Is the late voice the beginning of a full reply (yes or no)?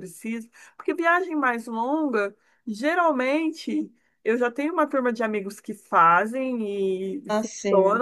no